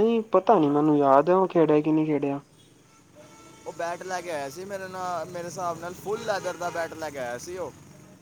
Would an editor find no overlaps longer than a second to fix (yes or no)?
yes